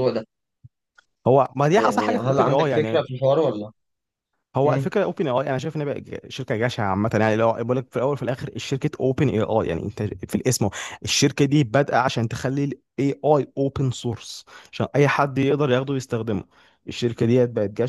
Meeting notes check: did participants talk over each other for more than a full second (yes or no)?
yes